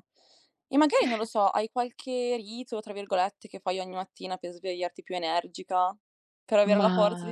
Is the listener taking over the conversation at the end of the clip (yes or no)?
no